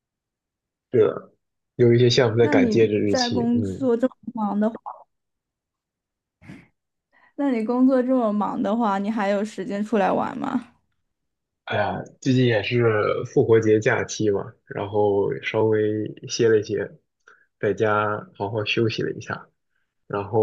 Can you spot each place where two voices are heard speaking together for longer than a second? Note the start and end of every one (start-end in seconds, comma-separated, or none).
2.4-3.9